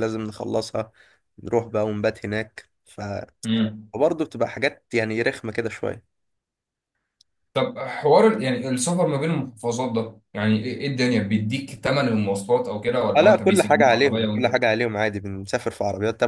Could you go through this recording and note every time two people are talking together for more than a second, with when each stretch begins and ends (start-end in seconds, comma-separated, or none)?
13.2-14.5